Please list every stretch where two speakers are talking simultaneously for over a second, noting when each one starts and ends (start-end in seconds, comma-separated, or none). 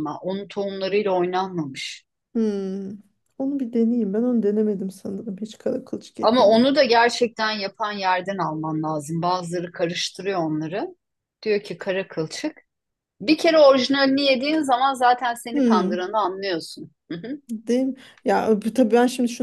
none